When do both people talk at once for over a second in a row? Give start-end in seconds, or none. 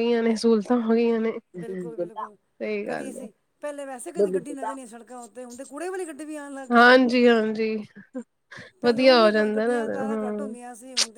8.8-10.6